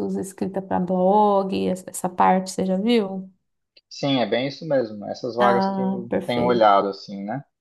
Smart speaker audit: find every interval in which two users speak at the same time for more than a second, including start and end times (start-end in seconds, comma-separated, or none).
5.4-6.8